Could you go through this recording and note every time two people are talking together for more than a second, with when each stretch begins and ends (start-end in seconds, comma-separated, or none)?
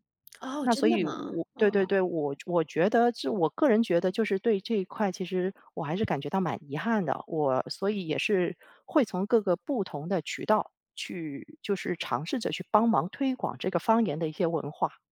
0.6-2.0